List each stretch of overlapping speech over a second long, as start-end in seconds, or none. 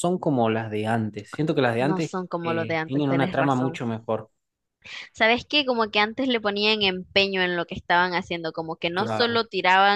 1.8-3.8